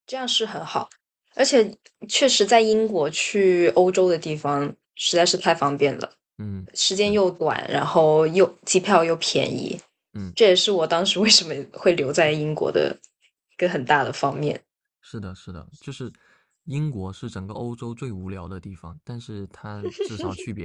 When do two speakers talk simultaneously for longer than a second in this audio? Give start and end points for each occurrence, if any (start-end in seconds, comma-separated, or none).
none